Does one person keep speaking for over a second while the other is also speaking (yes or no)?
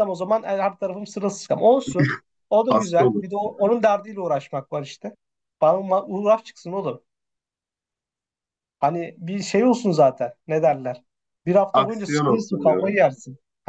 yes